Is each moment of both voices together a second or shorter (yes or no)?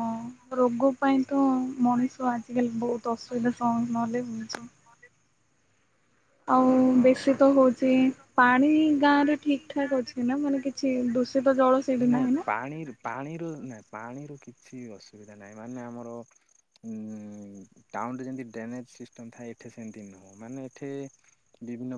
yes